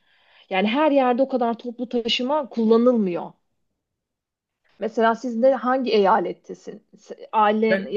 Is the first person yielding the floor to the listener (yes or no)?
no